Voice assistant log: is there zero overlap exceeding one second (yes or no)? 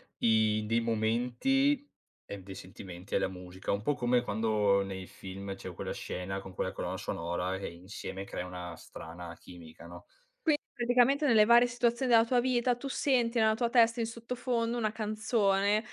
yes